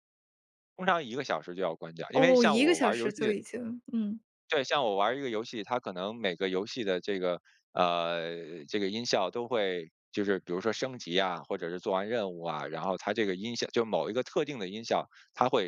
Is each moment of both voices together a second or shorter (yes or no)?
no